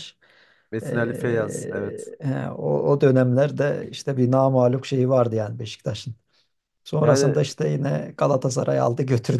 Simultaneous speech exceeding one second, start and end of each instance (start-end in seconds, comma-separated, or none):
0.8-2.1